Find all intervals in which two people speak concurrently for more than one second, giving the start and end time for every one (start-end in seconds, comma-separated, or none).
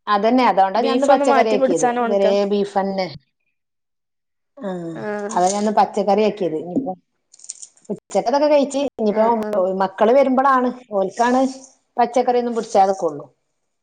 0.8-2.4